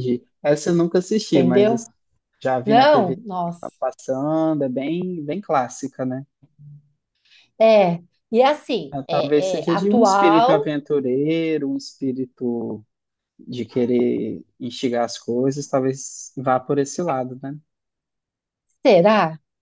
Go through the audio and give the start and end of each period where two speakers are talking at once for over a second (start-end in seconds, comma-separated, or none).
8.9-10.7